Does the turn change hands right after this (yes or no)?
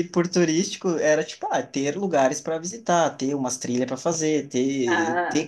no